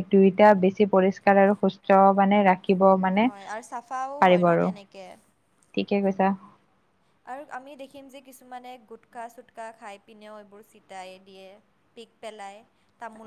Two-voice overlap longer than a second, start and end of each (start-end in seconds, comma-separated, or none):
none